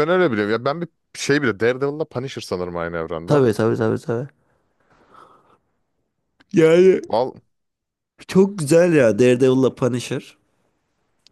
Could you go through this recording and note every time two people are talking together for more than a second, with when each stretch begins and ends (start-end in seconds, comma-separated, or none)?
none